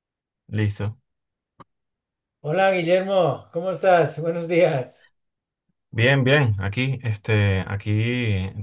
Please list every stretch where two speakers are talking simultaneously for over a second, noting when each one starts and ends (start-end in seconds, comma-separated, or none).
none